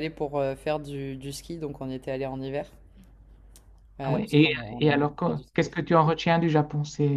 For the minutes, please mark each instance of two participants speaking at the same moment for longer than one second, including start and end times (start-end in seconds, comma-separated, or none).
4.0-5.9